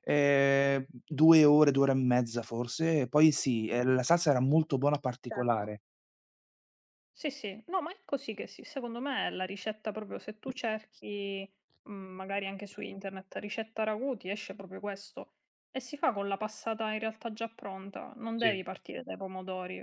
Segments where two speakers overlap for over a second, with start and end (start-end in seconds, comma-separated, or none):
none